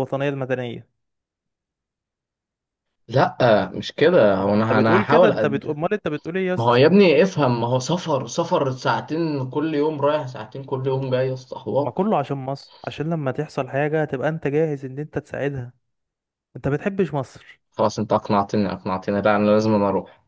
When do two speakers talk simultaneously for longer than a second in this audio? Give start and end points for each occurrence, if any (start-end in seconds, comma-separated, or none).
4.4-5.8